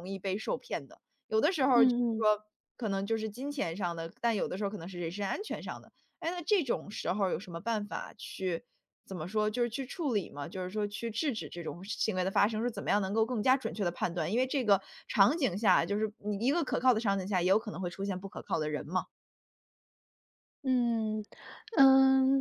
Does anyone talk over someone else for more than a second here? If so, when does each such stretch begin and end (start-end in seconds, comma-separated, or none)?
none